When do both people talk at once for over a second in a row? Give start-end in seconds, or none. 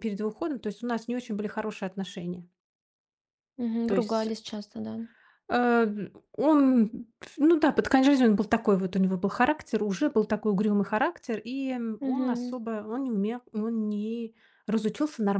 none